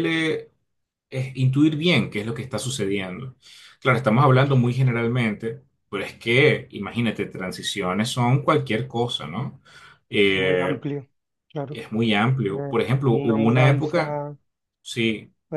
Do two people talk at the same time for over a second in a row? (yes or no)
yes